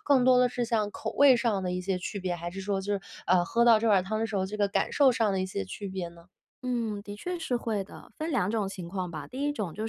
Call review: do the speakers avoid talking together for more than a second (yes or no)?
yes